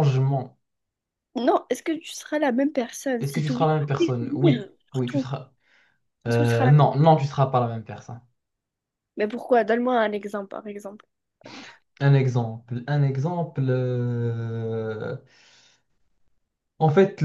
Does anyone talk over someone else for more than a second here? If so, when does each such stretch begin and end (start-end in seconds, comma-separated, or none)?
3.2-5.3